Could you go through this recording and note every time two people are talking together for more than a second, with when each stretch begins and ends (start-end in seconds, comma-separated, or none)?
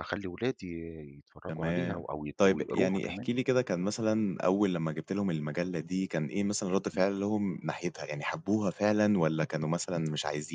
1.5-3.3